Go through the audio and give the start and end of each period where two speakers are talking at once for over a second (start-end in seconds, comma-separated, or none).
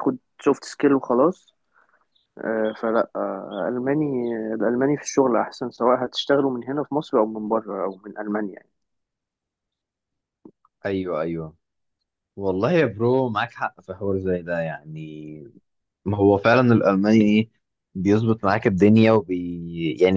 none